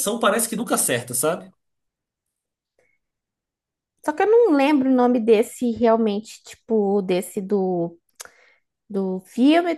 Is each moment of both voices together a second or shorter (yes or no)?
yes